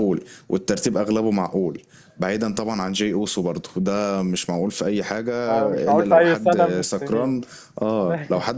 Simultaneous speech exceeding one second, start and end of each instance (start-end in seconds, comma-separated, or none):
5.9-7.4